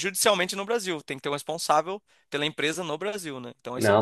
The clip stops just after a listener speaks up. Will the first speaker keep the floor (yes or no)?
no